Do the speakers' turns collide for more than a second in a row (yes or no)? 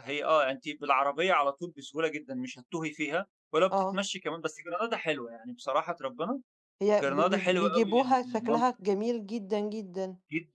yes